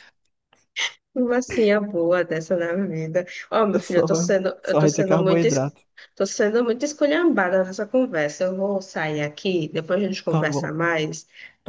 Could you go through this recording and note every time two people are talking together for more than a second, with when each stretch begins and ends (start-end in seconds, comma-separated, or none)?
3.8-5.8